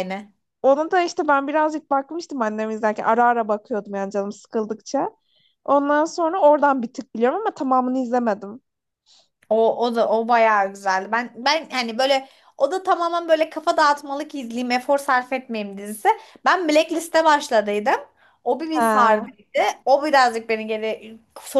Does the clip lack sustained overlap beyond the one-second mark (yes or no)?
yes